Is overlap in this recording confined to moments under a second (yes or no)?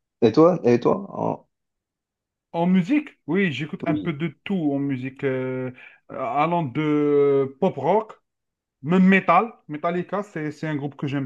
yes